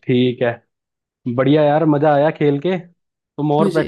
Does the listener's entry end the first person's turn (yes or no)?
no